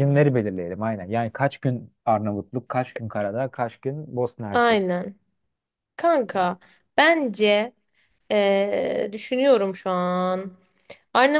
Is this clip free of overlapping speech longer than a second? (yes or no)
yes